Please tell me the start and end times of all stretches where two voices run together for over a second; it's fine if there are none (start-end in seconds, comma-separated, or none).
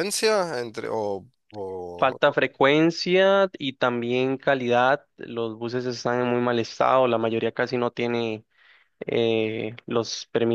none